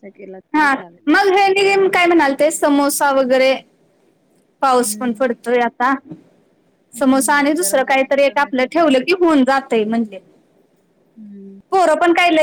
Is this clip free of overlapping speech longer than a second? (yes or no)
no